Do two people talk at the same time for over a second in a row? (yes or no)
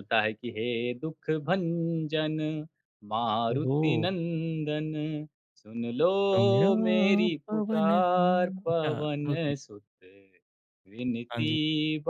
yes